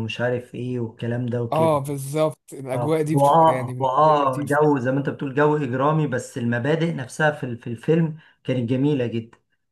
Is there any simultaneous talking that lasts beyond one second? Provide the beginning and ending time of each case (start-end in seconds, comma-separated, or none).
2.7-4.6